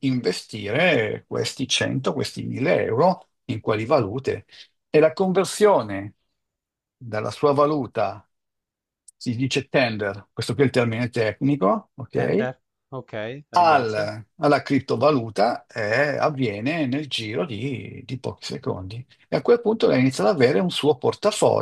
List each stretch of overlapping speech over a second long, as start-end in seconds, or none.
none